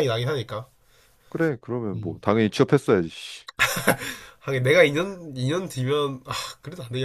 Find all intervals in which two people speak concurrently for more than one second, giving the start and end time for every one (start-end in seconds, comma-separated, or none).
none